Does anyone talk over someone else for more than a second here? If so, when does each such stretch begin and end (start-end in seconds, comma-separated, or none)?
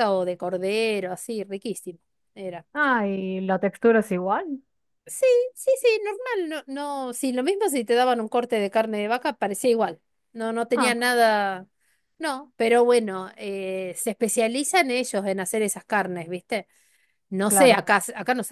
none